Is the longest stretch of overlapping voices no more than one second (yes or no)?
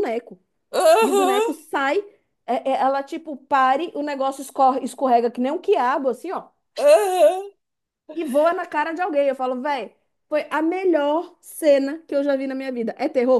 yes